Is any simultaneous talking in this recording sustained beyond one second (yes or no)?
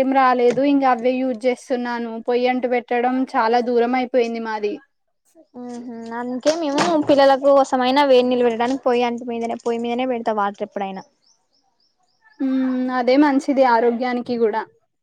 no